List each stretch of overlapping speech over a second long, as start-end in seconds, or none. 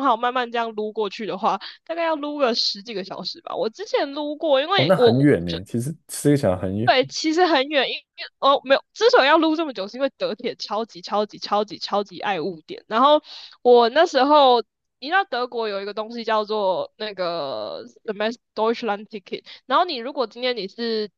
none